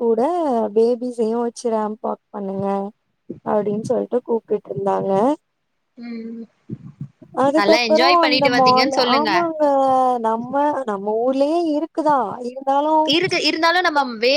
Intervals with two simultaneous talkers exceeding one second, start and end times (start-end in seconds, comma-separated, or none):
7.6-9.3